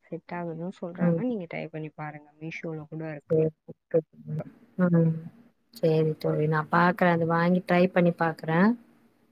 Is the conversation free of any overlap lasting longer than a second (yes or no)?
yes